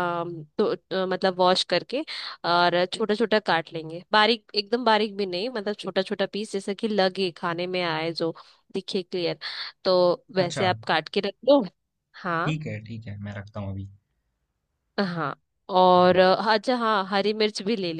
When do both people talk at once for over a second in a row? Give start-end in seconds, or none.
none